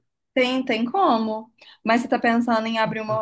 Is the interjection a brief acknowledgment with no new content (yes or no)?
yes